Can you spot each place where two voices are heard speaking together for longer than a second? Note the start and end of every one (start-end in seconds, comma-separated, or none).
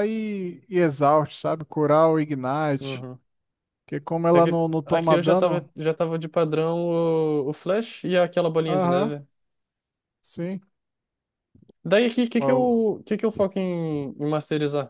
4.3-5.7